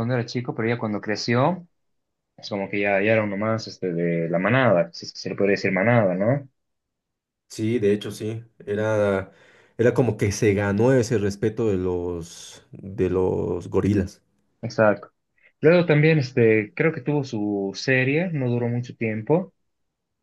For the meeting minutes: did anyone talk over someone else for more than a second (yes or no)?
no